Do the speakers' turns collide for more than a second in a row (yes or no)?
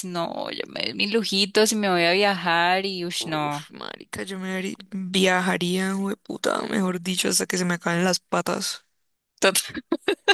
no